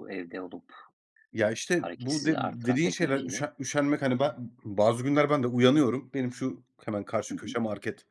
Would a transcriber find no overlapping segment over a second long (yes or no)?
no